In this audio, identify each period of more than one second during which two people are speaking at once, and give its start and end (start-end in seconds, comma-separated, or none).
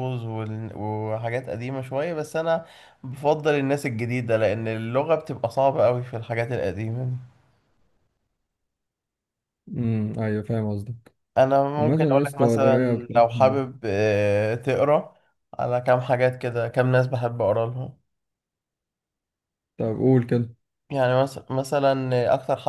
11.8-13.6